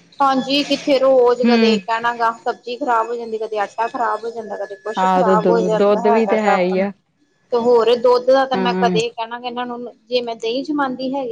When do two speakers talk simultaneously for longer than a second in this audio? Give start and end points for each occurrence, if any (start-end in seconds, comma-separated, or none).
5.0-6.8